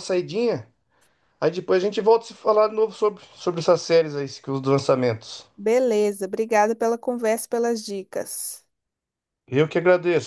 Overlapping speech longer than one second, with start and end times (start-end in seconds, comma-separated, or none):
none